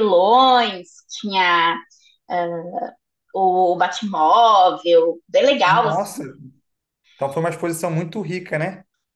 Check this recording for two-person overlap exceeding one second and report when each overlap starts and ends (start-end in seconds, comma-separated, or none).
none